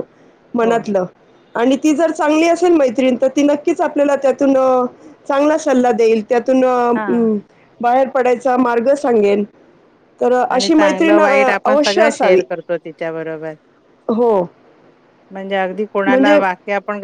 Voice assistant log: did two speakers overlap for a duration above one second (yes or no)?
yes